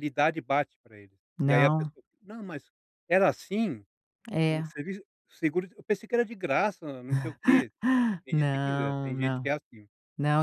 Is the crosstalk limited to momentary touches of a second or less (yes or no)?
no